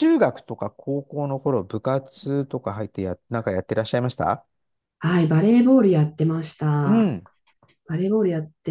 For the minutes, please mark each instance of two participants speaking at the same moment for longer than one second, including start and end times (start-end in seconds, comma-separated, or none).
none